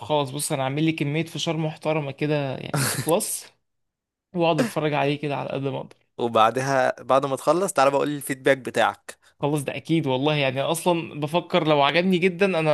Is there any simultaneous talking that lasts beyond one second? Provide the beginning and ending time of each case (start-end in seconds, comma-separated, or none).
none